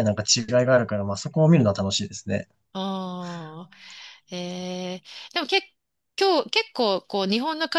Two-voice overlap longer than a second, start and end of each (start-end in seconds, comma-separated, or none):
none